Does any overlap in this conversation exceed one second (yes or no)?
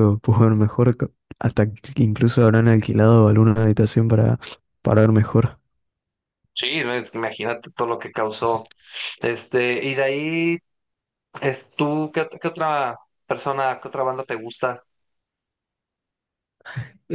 no